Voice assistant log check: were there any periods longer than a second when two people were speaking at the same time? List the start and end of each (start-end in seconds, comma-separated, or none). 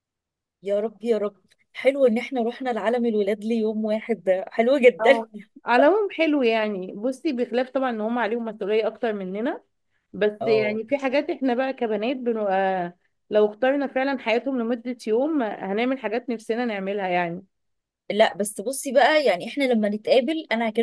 none